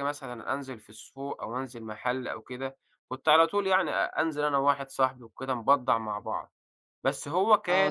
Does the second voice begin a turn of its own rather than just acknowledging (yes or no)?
yes